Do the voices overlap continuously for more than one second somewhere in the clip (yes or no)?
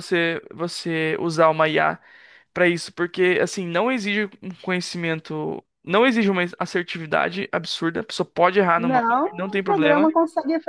yes